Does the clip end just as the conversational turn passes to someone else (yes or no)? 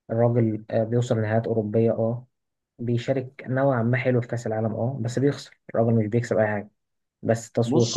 no